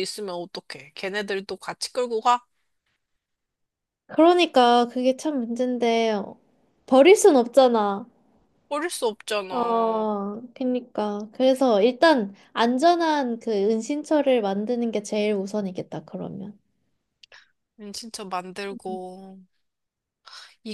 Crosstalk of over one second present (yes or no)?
no